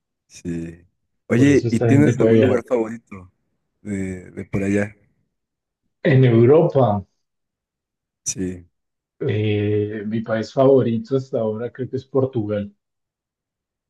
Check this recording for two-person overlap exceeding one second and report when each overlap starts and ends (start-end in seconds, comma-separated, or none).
1.3-2.6